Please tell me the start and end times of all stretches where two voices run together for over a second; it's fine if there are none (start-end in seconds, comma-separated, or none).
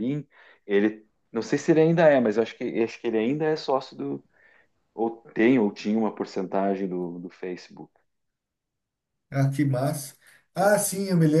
none